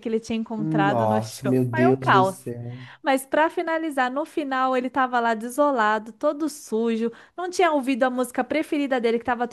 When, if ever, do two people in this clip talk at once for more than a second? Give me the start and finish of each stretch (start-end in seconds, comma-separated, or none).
0.6-2.4